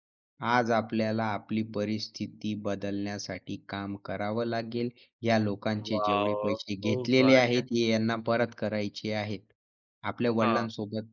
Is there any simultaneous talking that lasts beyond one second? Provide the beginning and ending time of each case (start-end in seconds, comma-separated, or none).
5.8-7.7